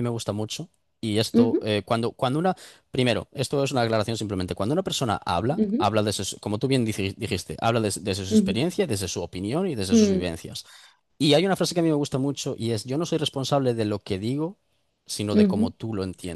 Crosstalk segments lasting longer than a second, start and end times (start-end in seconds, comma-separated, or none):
none